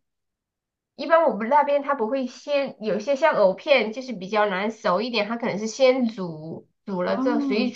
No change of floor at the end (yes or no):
yes